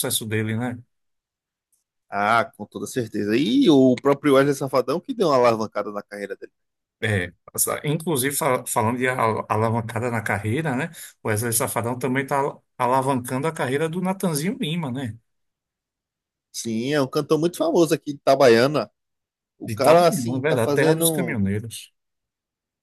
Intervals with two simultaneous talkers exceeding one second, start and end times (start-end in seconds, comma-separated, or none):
19.6-21.4